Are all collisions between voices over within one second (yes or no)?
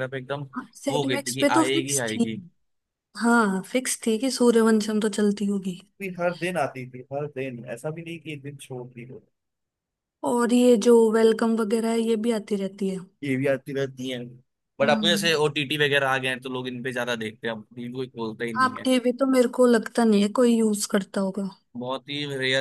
no